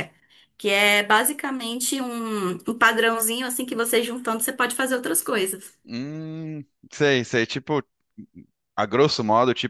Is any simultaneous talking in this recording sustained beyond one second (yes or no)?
no